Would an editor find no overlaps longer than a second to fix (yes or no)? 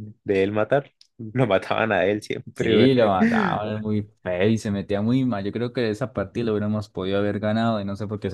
yes